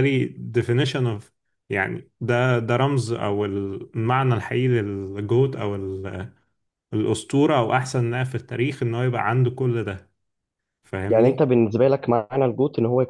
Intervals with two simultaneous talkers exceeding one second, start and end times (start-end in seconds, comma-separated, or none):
none